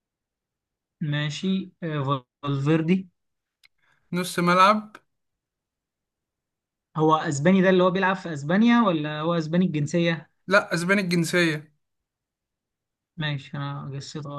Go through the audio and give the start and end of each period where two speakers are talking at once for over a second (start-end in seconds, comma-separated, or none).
none